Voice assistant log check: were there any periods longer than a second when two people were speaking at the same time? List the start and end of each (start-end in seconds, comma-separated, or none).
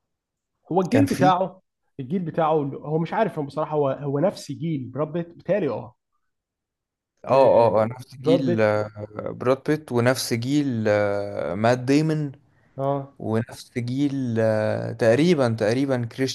7.3-8.8